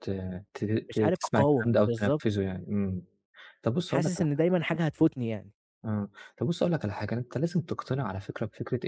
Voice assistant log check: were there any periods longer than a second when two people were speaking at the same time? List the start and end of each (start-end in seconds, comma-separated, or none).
0.9-2.2